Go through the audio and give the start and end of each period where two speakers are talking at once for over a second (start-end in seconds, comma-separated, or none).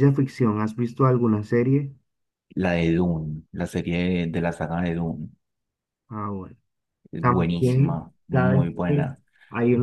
7.2-9.2